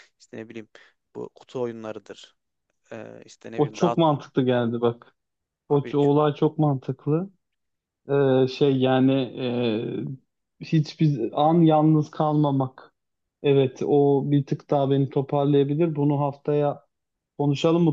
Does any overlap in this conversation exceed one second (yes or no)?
no